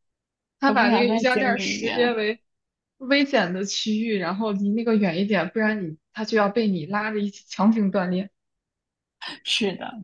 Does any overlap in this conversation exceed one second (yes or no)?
yes